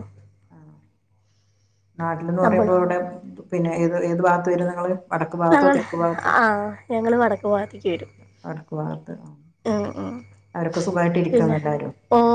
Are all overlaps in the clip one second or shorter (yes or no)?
yes